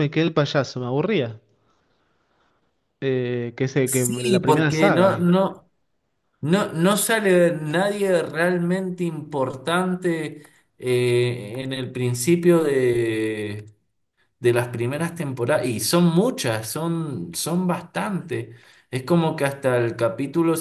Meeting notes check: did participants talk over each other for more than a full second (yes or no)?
yes